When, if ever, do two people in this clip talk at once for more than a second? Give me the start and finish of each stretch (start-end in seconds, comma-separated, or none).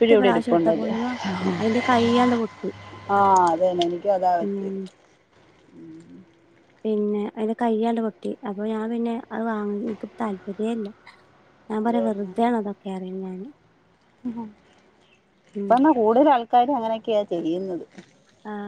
none